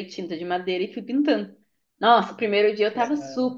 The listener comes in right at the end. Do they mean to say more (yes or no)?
no